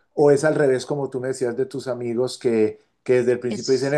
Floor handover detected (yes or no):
no